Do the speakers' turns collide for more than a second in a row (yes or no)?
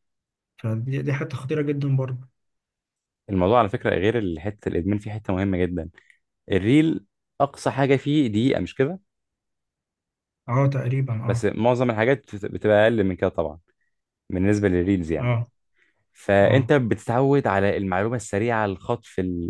no